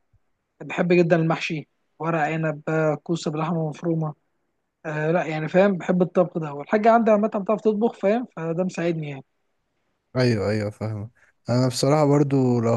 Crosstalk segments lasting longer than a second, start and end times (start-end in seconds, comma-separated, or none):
none